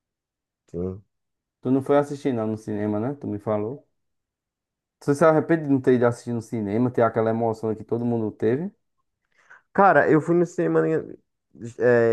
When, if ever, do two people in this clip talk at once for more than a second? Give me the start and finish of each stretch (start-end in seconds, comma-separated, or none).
none